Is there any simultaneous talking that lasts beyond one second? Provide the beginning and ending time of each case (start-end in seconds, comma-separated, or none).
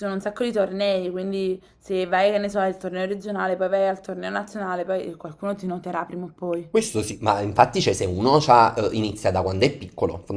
none